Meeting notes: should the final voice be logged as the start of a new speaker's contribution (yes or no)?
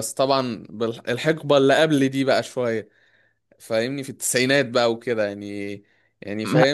no